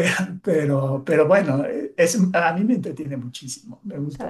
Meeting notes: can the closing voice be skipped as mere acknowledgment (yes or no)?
no